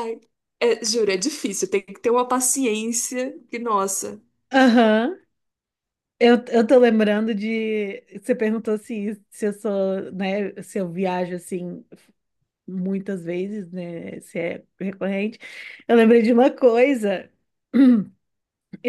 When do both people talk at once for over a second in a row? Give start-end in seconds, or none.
none